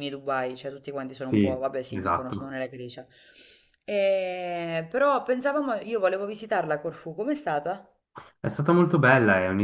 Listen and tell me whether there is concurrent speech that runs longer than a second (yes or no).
yes